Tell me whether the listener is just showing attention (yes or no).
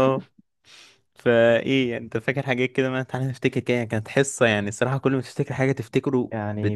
no